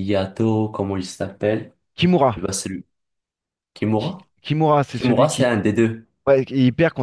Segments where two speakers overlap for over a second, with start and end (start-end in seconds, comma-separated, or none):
none